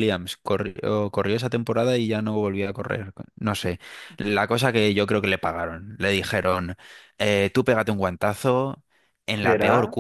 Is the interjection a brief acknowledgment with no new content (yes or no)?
yes